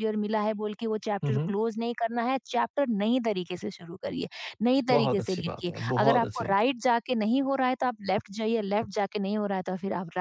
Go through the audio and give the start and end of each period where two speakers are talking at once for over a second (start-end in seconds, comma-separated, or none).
4.9-6.7